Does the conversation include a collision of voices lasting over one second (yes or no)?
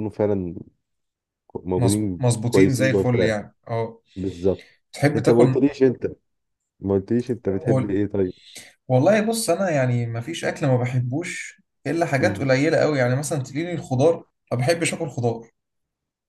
yes